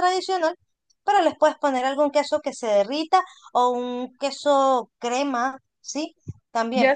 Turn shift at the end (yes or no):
yes